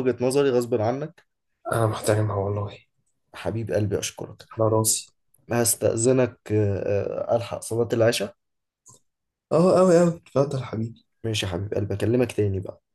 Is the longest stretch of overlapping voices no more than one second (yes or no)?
yes